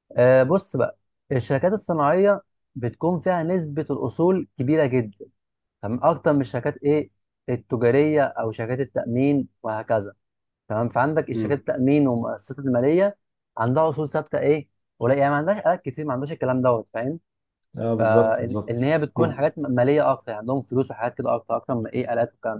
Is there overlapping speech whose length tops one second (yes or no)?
yes